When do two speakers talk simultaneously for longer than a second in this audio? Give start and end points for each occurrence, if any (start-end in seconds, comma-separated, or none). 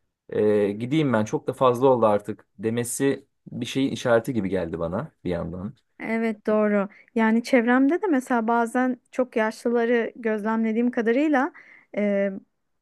none